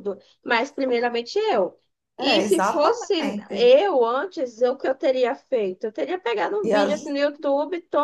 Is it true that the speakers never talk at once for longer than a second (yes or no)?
no